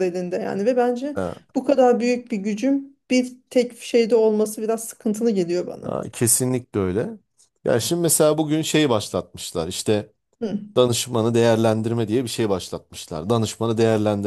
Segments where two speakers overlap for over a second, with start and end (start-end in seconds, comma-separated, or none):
none